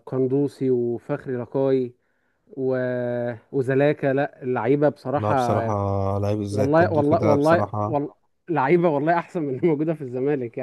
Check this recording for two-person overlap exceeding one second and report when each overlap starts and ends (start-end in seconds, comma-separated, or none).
6.5-8.0